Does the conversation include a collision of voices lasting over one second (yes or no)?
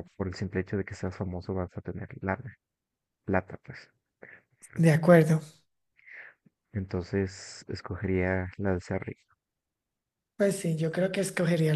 no